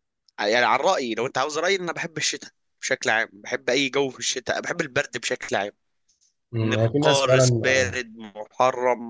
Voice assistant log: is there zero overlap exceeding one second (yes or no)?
no